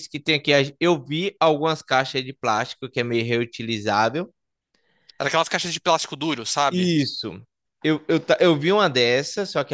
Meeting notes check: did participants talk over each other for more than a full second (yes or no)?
no